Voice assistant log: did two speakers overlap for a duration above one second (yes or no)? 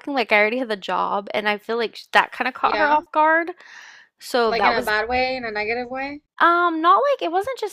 no